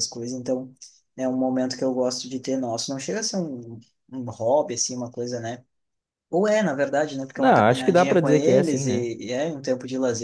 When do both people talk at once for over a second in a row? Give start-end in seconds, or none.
7.3-9.1